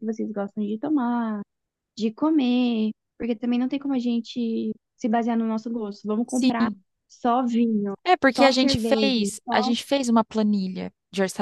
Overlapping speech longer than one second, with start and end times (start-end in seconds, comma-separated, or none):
8.3-9.7